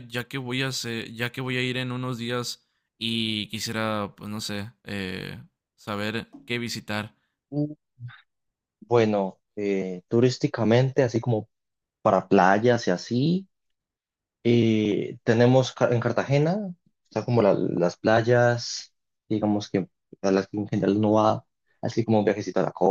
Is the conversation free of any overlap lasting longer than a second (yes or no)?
yes